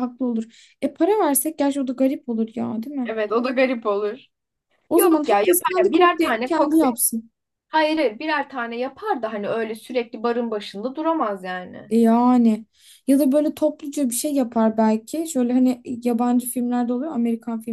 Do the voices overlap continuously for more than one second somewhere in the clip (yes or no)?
yes